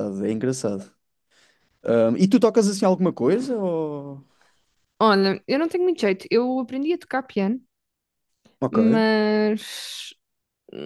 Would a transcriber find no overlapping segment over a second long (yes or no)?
yes